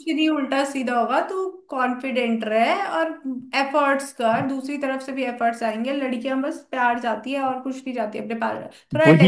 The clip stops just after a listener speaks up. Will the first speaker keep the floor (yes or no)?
no